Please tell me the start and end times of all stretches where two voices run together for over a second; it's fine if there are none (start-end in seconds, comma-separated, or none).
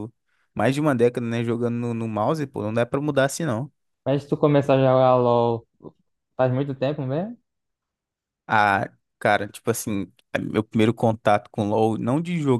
none